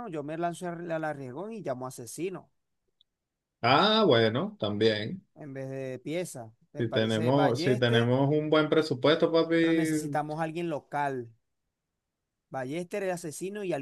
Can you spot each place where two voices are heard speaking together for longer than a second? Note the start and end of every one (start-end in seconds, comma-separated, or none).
6.8-8.1